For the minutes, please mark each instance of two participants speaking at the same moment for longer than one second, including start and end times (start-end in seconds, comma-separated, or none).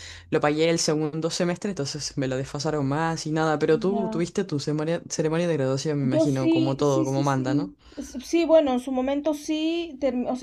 6.0-7.7